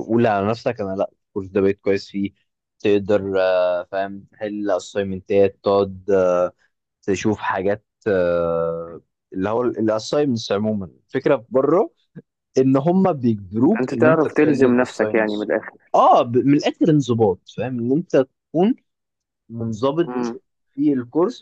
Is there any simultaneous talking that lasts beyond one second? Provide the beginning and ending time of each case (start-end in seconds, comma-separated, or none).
13.8-15.5